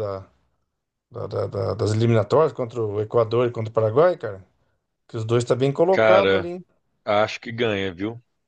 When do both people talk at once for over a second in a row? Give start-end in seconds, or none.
none